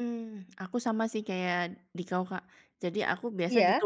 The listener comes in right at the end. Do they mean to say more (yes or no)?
no